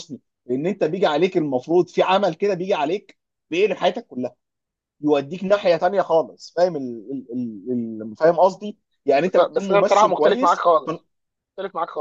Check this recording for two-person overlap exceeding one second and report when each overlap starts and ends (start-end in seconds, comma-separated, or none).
9.2-10.9